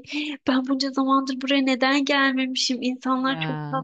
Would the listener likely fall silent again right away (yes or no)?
yes